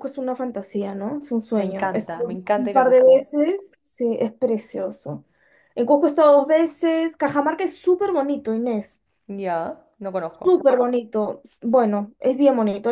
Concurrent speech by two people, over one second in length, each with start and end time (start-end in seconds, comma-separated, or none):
1.5-3.2